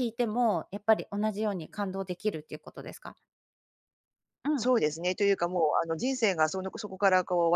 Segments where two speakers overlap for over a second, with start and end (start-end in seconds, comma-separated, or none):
none